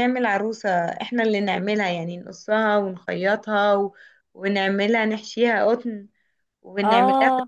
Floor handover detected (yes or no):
no